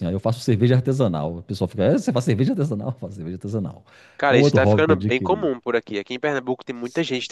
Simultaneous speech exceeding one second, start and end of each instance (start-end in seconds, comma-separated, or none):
4.3-5.5